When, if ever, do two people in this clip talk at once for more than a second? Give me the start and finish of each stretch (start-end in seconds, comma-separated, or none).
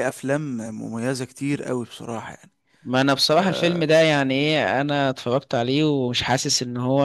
none